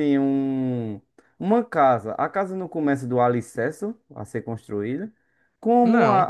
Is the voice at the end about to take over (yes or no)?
no